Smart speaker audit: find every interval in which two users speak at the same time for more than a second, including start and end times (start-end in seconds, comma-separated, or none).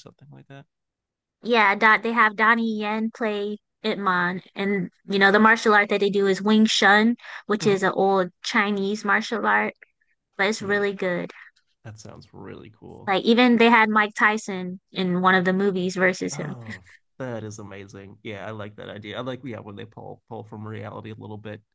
none